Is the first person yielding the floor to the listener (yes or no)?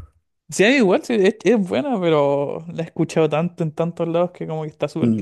yes